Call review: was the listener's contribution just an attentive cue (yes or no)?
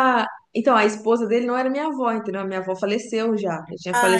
yes